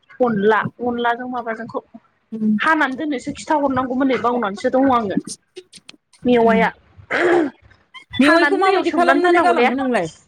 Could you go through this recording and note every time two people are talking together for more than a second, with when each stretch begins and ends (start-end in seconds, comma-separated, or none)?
8.3-9.7